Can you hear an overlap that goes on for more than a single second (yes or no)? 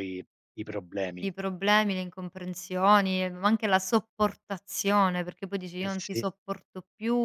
no